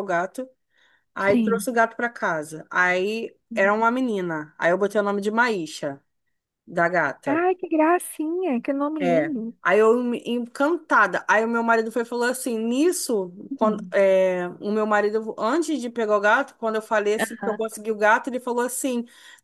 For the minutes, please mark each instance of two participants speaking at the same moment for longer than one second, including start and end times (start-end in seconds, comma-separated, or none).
none